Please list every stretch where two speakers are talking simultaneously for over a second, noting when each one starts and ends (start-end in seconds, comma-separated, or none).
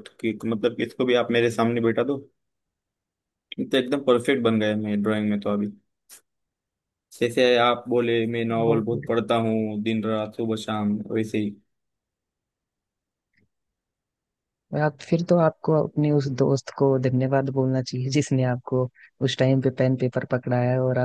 none